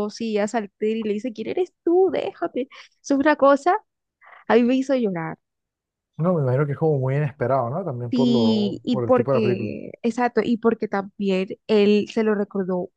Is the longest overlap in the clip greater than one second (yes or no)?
yes